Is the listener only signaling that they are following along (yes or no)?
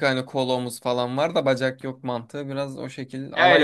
no